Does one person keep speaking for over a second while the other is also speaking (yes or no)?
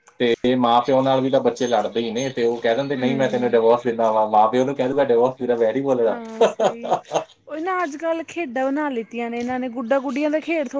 no